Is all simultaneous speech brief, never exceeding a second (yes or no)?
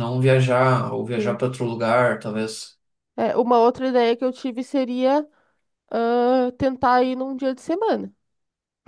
yes